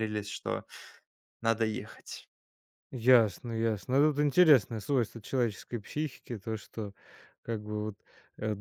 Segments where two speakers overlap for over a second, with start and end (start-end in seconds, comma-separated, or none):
none